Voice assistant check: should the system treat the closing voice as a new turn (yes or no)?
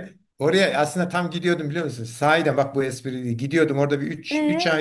no